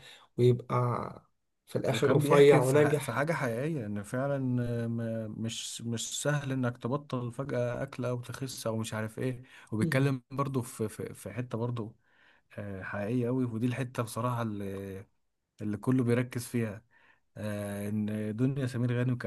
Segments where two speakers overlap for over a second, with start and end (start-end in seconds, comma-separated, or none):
1.9-3.2